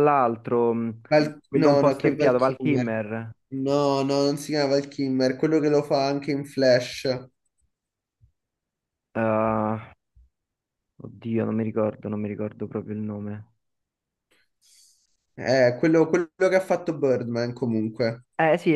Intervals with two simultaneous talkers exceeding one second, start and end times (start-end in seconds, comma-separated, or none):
1.5-3.0